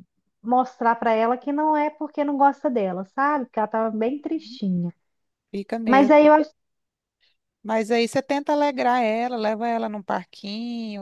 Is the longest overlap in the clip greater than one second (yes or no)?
no